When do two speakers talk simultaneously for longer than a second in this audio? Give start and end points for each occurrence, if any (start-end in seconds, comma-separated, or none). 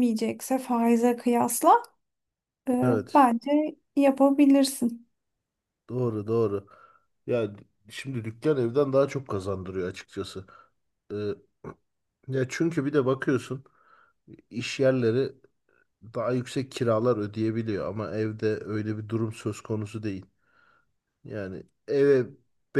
none